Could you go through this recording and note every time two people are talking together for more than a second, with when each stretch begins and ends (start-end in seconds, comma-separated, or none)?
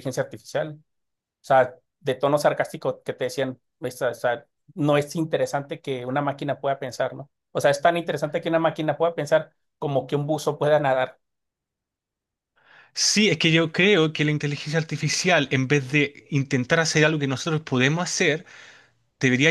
none